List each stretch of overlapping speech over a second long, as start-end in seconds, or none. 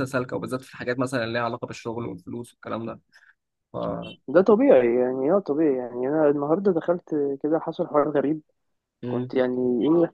none